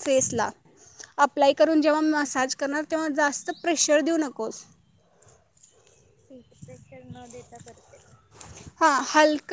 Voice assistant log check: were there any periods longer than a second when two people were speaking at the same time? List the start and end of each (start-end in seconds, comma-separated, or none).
none